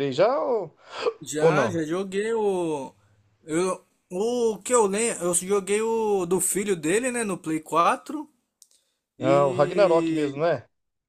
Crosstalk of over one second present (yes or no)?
yes